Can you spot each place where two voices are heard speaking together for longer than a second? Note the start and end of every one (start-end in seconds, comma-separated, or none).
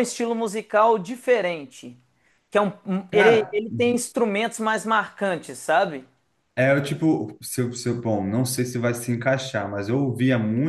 none